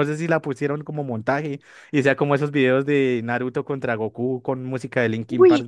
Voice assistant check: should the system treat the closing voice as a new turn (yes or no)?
yes